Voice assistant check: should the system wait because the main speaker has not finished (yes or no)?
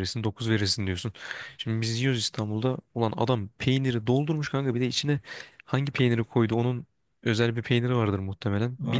yes